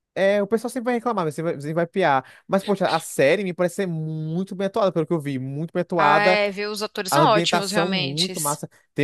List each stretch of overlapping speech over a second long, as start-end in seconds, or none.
7.1-8.3